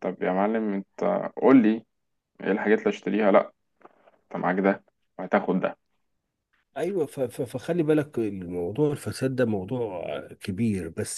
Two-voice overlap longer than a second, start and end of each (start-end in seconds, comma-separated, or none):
none